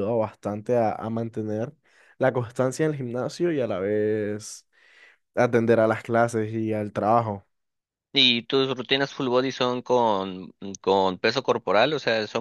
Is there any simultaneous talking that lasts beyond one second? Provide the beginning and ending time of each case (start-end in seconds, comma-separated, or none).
none